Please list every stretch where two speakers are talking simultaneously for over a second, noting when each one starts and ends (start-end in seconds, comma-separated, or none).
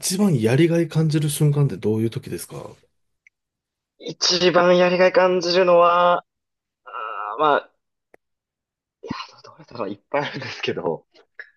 none